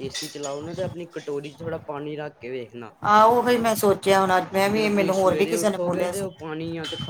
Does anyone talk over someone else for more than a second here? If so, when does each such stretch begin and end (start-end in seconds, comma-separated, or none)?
4.6-6.3